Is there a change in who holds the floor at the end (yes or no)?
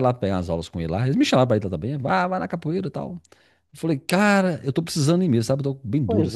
yes